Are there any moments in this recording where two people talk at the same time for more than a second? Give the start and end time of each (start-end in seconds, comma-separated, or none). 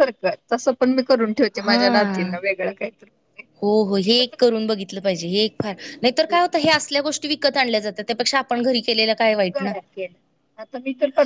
none